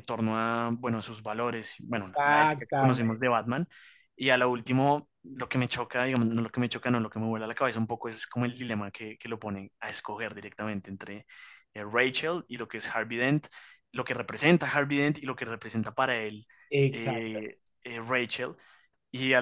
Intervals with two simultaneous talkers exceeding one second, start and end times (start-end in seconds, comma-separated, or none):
1.9-3.3